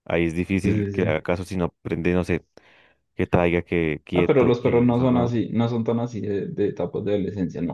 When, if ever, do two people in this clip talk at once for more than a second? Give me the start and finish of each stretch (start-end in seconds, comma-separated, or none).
4.1-5.4